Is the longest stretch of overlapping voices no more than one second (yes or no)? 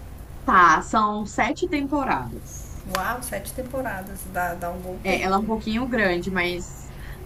yes